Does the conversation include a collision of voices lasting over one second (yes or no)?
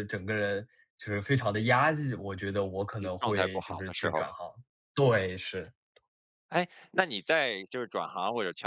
yes